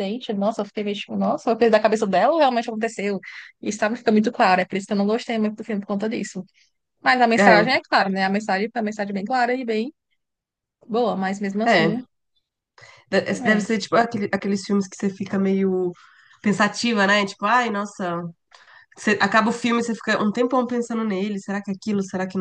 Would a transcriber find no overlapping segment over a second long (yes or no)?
yes